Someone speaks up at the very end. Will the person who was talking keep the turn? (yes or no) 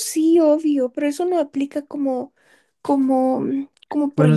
no